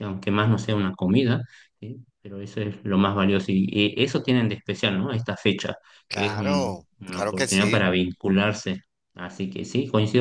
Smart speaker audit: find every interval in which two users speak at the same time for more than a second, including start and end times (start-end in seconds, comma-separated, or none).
6.1-7.9